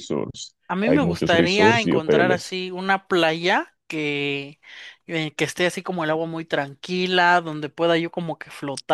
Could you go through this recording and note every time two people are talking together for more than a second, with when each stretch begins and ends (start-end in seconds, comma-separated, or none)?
0.7-2.6